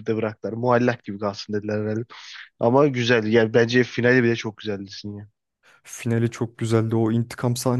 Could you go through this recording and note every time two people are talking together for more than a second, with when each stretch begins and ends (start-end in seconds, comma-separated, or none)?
none